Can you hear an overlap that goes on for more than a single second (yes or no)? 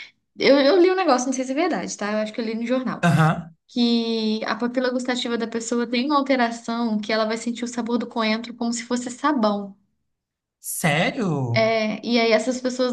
no